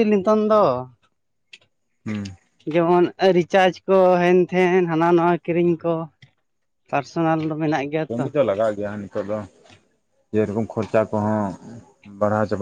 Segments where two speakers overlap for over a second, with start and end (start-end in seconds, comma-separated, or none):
none